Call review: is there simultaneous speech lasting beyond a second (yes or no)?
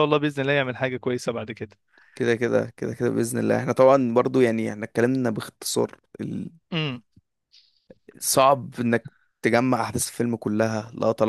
no